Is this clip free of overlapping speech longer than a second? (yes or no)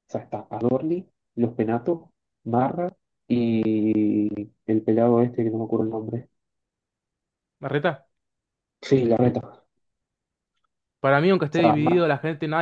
yes